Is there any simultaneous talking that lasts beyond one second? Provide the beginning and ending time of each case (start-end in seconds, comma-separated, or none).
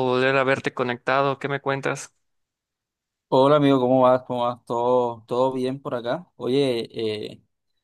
none